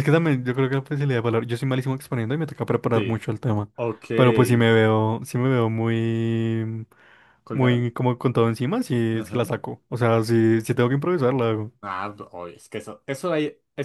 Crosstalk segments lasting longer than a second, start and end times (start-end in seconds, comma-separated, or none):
none